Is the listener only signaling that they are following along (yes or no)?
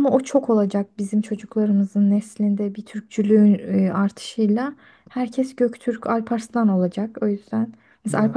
yes